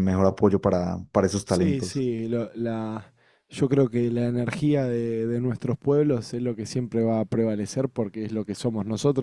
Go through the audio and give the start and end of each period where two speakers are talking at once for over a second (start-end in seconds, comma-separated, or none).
none